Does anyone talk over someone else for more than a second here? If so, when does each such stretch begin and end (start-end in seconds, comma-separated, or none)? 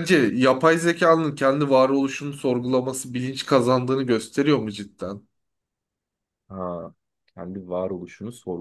none